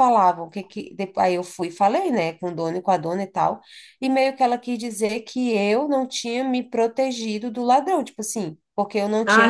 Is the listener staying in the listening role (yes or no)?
no